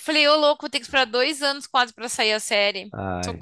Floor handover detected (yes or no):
yes